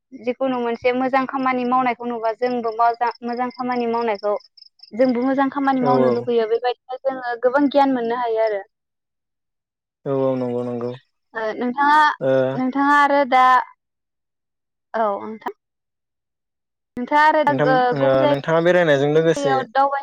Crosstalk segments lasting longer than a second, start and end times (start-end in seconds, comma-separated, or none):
17.5-19.5